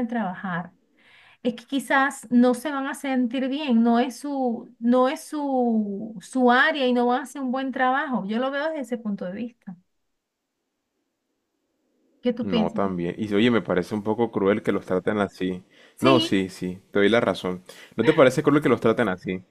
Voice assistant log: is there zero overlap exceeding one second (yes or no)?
yes